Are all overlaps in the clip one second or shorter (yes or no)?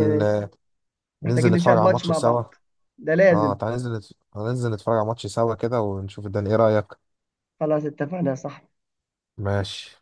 no